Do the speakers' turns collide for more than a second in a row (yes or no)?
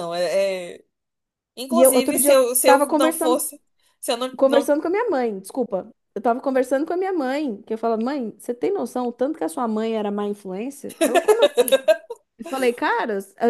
yes